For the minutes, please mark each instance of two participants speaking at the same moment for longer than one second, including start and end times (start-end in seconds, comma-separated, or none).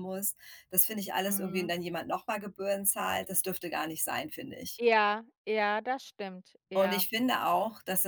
none